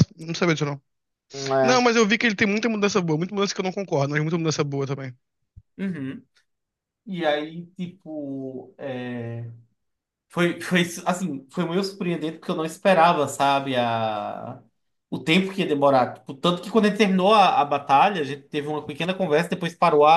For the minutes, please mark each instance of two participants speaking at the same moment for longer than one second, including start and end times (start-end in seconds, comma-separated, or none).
none